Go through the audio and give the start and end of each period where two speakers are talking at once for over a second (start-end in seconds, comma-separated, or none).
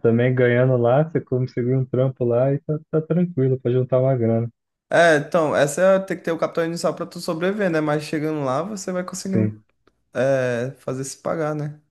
none